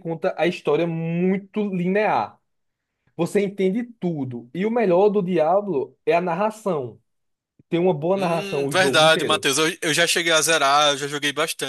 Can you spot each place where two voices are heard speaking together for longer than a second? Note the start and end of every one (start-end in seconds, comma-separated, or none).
8.2-9.5